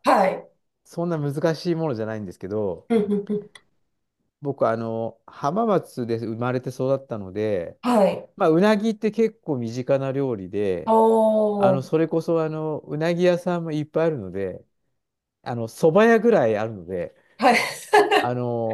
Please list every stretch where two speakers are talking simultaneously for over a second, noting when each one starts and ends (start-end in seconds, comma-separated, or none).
none